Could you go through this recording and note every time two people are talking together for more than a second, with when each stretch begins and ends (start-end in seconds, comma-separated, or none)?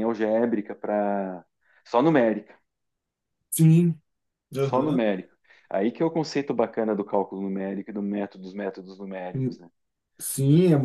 none